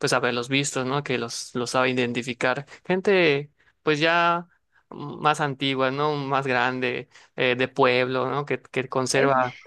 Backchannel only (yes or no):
yes